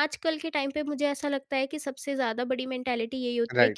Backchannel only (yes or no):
yes